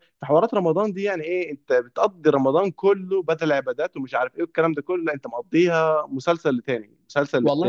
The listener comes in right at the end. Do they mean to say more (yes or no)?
yes